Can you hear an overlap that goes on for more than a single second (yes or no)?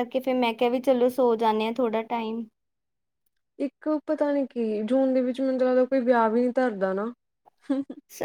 no